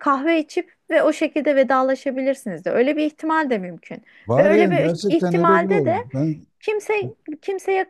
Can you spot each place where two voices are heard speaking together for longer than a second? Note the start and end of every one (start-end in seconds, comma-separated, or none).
4.3-6.0